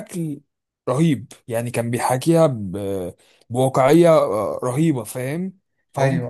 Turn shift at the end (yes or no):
no